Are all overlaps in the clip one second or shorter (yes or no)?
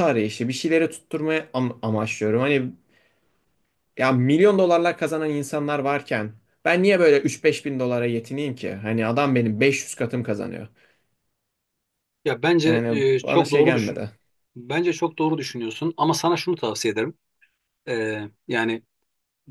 no